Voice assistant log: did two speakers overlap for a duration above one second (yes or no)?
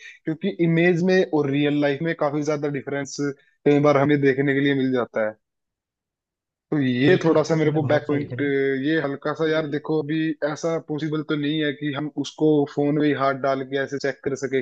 yes